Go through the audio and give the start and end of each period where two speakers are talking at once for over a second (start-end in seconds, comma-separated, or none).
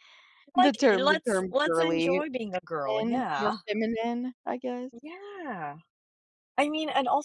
0.6-2.2